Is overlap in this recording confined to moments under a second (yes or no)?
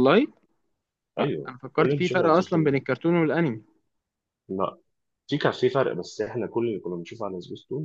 no